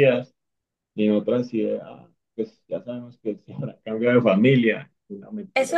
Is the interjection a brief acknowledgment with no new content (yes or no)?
no